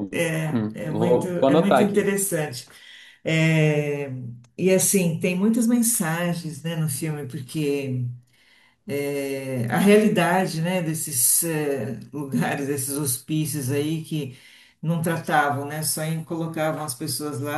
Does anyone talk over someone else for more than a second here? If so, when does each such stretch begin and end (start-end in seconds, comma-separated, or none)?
0.5-2.1